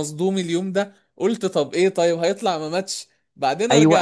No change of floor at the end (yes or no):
no